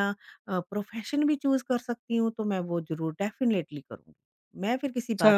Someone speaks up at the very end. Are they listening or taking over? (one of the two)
taking over